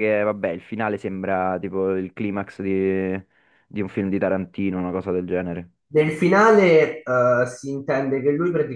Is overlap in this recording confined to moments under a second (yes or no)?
yes